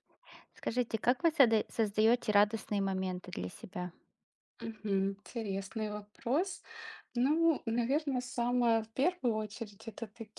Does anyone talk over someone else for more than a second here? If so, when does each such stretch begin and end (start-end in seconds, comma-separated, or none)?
none